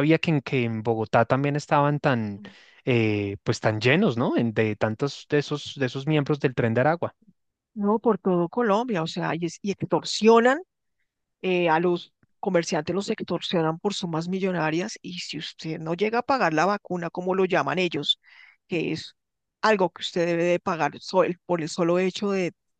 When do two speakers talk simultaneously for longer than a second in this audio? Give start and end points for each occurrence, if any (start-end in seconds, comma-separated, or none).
none